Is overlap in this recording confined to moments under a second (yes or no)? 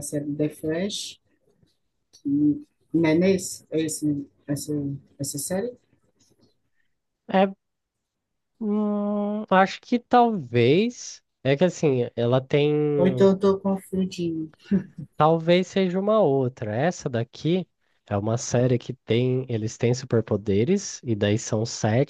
yes